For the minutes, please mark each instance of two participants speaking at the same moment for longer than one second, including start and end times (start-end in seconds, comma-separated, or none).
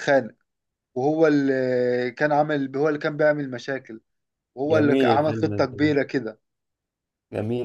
4.7-6.0